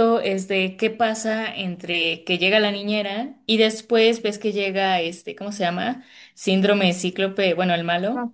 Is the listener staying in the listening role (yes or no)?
yes